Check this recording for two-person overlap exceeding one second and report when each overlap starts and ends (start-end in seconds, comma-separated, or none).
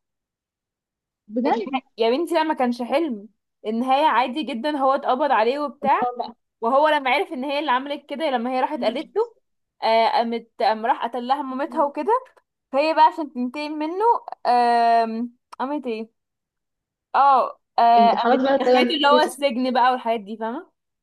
18.0-19.4